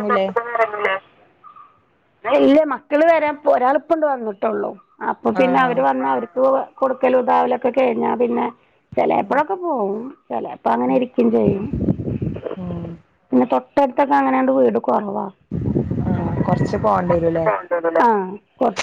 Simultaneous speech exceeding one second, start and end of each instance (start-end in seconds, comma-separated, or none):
none